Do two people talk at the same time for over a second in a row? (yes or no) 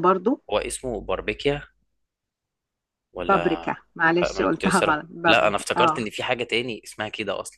yes